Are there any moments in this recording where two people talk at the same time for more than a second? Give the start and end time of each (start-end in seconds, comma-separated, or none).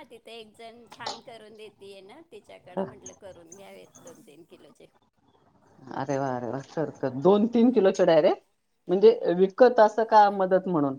none